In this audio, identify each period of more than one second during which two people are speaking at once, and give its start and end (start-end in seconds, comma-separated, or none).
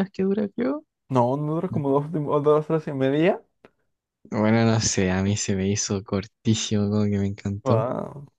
none